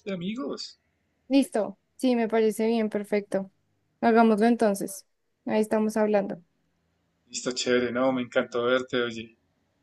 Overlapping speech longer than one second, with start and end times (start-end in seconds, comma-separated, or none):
none